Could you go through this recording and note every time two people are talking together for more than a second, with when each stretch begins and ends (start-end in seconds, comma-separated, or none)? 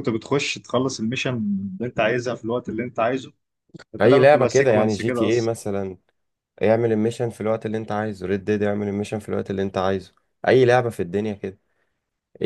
4.0-5.5